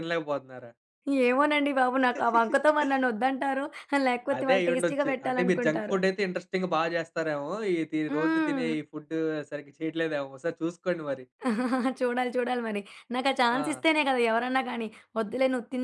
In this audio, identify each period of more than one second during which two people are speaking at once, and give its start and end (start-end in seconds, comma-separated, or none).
4.4-6.0